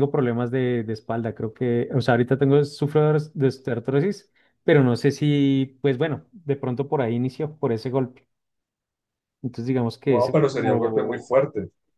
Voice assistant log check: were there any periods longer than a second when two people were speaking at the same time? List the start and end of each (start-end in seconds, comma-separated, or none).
10.1-11.3